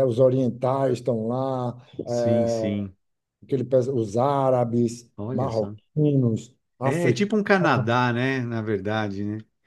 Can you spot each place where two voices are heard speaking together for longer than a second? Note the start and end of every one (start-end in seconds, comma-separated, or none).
none